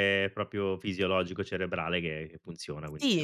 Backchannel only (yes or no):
no